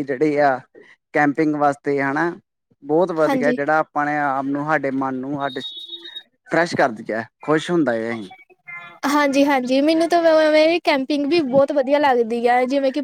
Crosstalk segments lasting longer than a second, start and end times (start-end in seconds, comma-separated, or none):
none